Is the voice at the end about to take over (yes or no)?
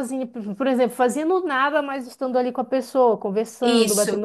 yes